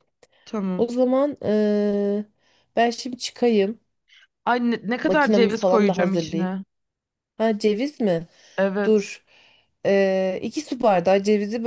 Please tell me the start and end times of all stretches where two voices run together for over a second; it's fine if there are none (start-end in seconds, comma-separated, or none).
5.0-6.5